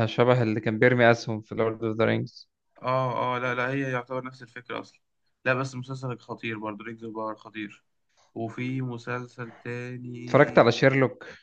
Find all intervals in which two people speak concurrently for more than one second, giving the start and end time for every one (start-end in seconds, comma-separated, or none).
none